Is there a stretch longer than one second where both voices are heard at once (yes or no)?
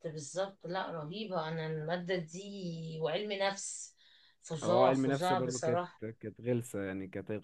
yes